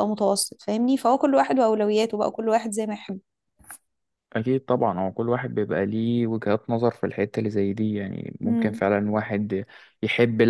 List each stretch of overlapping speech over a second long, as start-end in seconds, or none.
none